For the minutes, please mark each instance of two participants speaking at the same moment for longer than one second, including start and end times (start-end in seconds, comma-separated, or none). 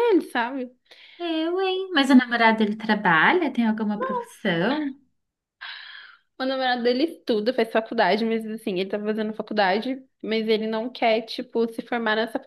none